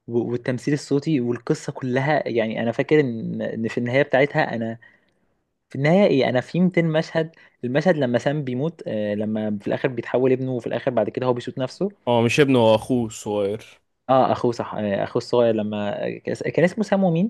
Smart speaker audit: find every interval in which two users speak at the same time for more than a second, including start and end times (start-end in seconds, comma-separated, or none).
none